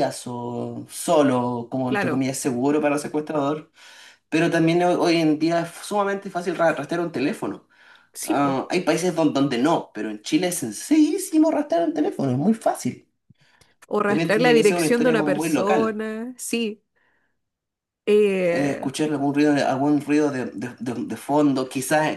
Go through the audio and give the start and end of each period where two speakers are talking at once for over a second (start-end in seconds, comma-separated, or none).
14.0-16.0